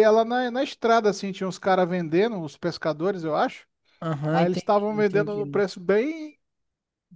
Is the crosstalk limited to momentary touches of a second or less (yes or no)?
no